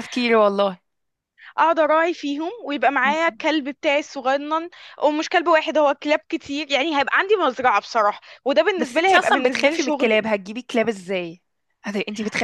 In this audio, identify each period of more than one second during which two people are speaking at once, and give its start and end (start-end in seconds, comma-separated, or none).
8.8-10.2